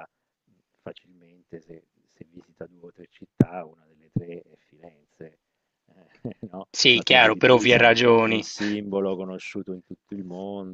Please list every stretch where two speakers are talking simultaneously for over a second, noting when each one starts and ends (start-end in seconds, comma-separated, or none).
6.9-8.4